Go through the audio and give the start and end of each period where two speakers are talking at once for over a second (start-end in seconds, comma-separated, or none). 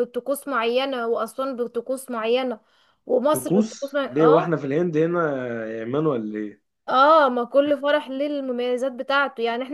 3.3-4.6